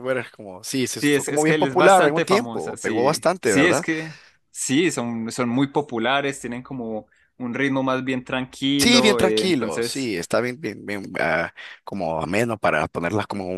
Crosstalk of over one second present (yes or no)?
yes